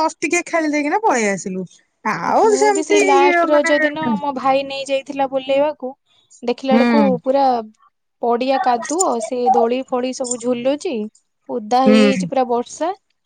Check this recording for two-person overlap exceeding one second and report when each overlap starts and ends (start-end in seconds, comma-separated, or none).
2.2-4.1